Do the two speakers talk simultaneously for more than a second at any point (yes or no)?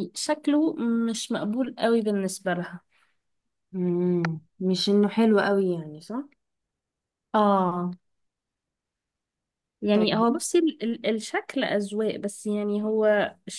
no